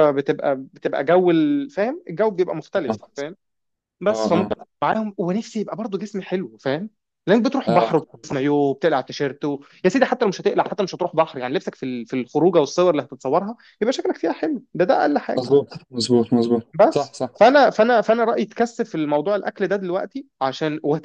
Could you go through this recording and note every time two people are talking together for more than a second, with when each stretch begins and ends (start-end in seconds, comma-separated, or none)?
none